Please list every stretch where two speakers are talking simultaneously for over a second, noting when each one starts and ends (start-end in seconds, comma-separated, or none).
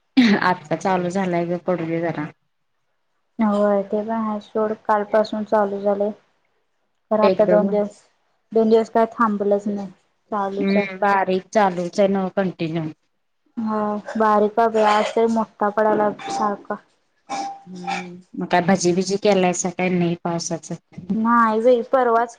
none